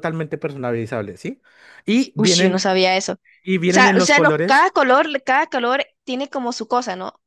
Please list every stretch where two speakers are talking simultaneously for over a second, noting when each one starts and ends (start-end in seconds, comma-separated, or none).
3.4-4.7